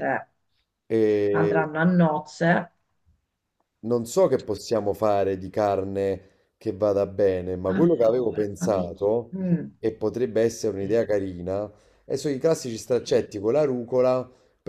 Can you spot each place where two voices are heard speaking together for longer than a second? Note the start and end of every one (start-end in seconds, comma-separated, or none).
7.7-9.4